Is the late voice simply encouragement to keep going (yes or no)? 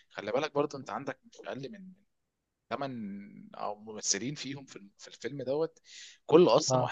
yes